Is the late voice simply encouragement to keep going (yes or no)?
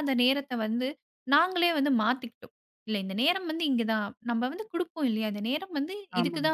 yes